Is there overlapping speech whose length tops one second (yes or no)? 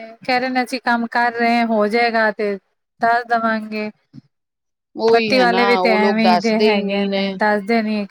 yes